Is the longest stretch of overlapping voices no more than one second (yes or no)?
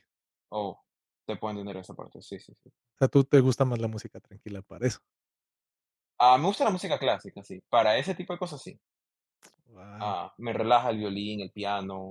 yes